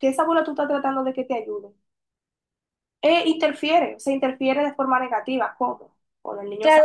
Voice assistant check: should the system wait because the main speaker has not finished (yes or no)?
no